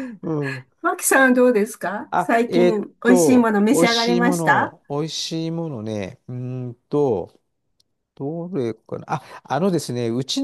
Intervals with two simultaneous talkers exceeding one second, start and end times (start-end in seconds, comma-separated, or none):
2.1-4.8